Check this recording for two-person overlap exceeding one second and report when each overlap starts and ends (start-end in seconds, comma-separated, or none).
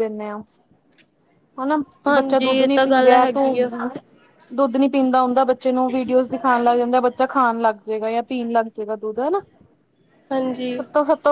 2.1-3.7